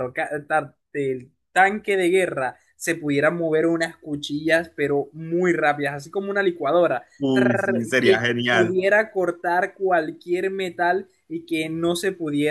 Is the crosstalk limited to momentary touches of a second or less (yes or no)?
no